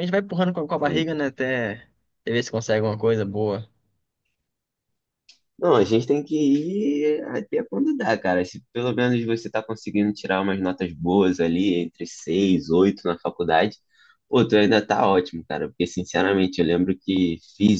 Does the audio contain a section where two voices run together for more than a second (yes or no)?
no